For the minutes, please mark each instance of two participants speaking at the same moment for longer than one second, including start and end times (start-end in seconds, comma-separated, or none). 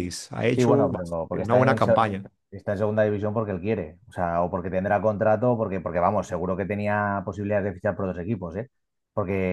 0.6-2.0